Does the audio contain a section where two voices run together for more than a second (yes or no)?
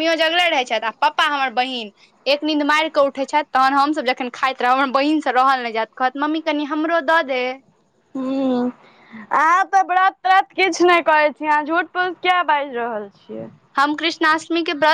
no